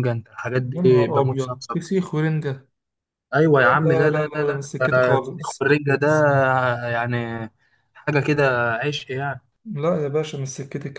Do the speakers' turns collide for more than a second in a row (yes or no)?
yes